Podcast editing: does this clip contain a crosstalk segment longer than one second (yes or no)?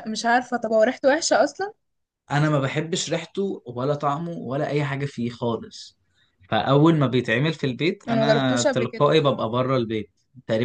yes